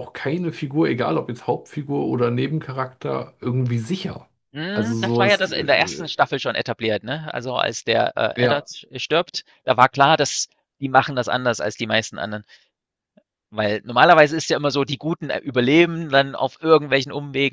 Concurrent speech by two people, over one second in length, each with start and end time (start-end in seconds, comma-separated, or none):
4.7-6.1